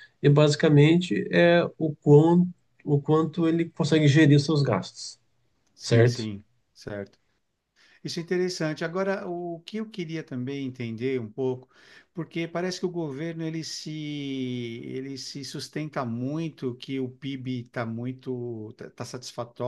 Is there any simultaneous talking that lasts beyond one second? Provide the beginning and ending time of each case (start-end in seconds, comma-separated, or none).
none